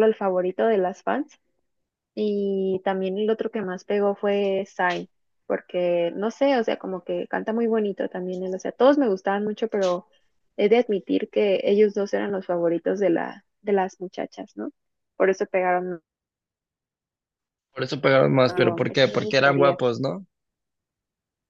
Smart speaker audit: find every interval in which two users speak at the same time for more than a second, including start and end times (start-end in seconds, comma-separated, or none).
18.5-19.8